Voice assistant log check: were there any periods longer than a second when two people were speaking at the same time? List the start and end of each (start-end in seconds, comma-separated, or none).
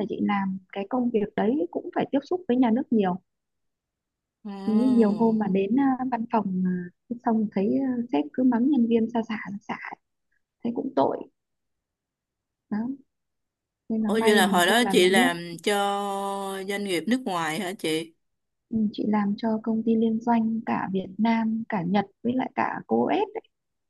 14.1-15.3